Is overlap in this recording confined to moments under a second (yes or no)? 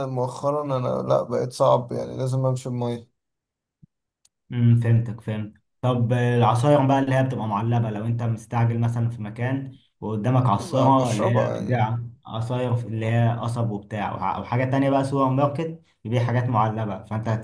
no